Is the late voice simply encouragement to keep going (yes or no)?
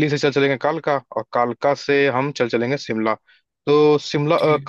yes